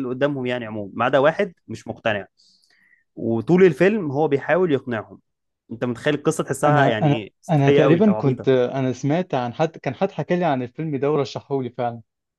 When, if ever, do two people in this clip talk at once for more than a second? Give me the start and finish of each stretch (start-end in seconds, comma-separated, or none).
6.7-8.5